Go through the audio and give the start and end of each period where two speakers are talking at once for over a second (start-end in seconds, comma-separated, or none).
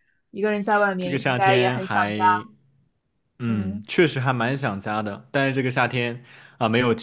1.0-2.2